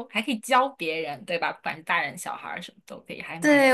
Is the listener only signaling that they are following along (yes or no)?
no